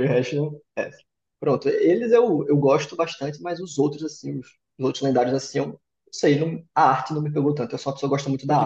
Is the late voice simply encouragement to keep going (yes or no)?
no